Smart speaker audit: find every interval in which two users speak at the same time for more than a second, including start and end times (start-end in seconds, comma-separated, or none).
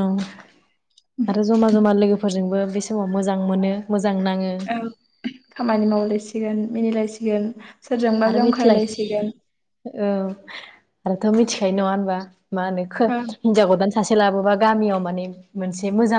none